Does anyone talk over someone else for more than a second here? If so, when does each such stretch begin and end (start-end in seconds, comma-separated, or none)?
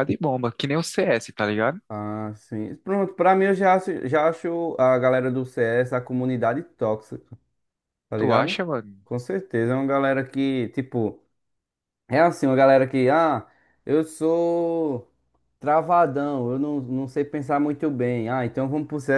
none